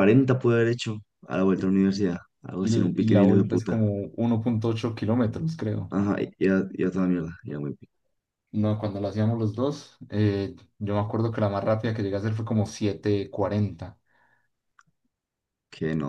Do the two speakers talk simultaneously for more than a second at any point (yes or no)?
yes